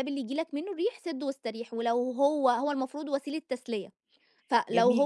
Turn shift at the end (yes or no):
yes